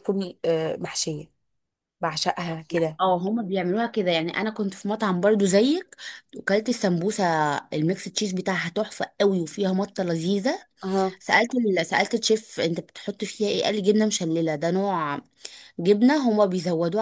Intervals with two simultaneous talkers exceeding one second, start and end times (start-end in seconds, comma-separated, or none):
none